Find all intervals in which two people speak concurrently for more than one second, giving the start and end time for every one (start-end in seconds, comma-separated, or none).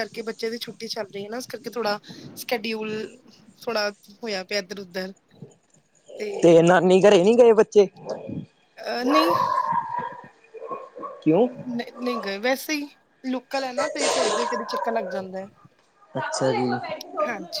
none